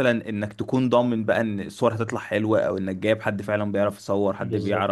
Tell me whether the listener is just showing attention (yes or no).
yes